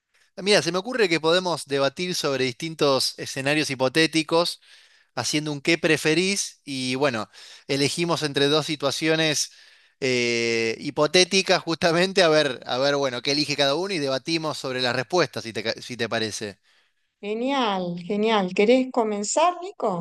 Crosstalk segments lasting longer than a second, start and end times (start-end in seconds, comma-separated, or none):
none